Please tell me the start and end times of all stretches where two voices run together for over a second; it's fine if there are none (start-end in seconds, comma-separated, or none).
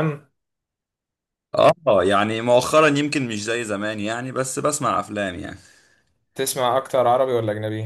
none